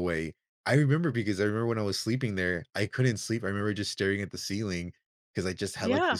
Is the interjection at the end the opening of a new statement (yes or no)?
no